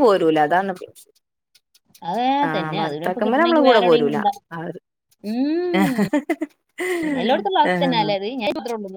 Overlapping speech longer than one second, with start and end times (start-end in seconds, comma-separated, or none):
2.5-4.2